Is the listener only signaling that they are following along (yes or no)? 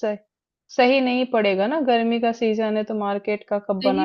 no